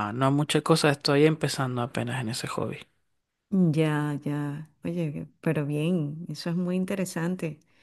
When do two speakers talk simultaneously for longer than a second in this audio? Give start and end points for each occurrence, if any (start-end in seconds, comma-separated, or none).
none